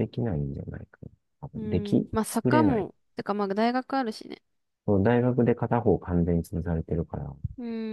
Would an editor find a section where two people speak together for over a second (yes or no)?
yes